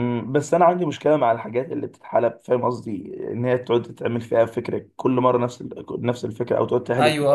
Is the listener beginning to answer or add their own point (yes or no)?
yes